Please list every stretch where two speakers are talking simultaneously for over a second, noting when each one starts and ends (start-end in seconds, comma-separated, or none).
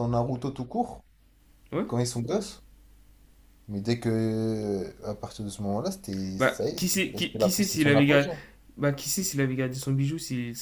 6.4-8.3